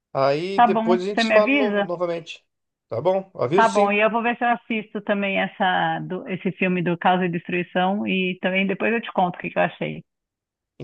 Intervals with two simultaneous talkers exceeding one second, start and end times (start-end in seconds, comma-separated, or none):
0.5-1.9